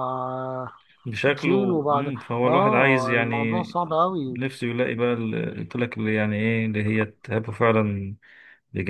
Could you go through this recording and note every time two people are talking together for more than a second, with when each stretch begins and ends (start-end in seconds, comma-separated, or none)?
1.4-3.6